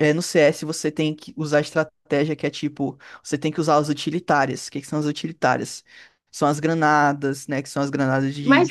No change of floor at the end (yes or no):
no